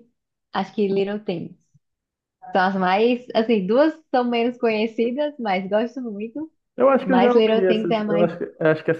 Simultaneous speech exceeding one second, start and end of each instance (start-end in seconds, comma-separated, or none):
7.0-8.3